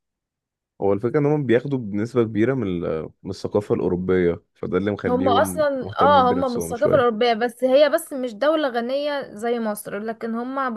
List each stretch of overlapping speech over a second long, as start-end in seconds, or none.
5.1-7.2